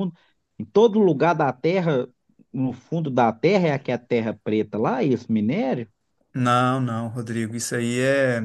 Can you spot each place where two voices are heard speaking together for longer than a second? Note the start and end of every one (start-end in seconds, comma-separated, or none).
none